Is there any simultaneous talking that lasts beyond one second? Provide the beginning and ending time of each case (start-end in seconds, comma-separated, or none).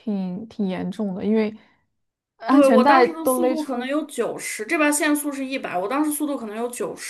2.5-4.0